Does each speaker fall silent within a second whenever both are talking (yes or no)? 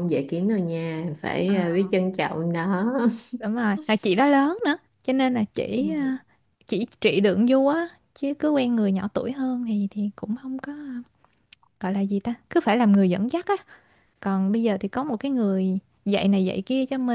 yes